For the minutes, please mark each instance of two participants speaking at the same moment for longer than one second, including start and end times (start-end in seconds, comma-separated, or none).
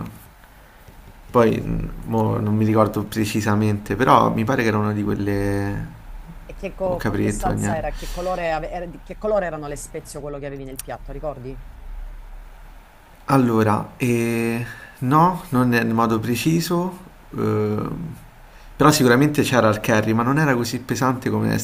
6.8-8.1